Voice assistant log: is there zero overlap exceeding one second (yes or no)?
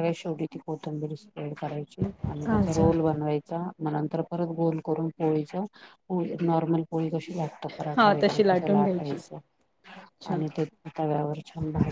no